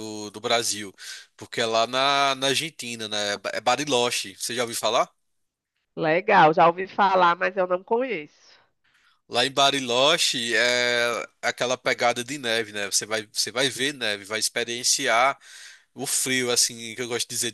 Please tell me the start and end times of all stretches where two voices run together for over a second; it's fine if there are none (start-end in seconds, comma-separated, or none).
none